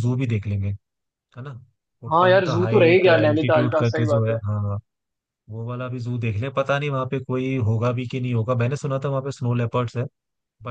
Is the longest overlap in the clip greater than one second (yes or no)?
yes